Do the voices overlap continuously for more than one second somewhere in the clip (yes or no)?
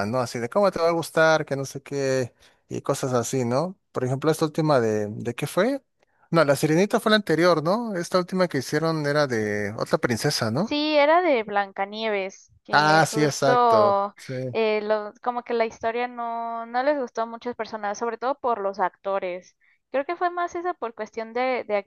yes